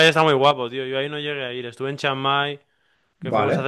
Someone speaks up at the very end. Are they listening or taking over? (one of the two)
listening